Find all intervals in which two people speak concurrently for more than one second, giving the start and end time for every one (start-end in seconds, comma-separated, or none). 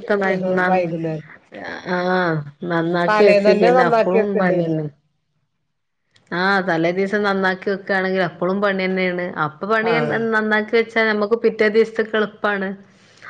3.1-4.8